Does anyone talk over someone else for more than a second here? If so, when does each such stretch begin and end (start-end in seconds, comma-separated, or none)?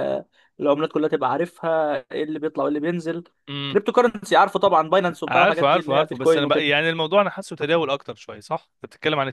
5.3-6.7